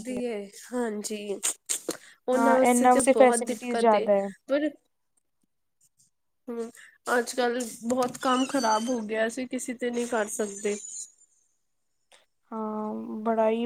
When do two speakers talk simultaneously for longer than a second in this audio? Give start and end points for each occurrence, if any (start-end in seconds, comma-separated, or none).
2.3-4.0